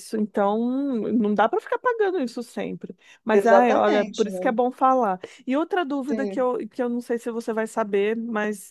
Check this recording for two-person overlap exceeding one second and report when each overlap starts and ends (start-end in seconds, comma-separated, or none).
3.3-4.6